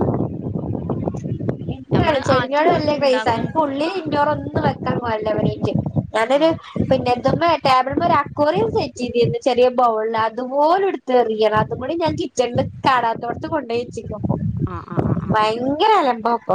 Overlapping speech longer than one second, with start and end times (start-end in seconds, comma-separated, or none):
2.0-3.5